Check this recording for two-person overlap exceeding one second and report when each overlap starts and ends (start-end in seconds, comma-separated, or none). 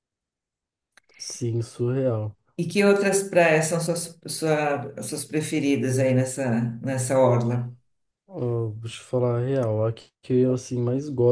none